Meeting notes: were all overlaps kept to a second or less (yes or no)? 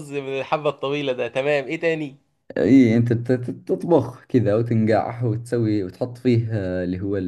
yes